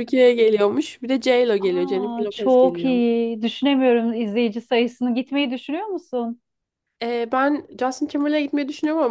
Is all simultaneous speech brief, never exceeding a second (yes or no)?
no